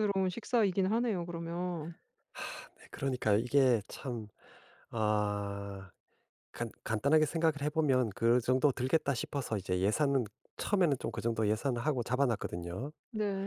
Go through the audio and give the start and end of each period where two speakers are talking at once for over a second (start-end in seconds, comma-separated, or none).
none